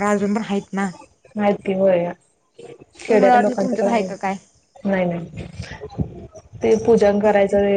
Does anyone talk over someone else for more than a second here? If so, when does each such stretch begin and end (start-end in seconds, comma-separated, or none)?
3.0-4.3